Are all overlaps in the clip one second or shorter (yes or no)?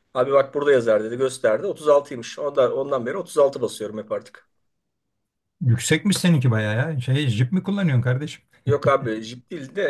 yes